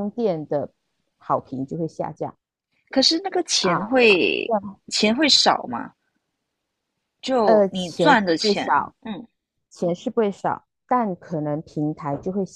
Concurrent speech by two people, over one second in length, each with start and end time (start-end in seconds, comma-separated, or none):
7.4-8.9